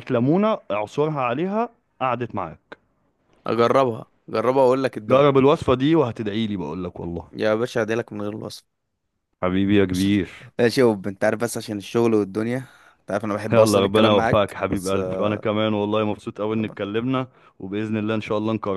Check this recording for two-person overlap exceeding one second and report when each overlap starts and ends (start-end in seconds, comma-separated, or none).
13.5-15.3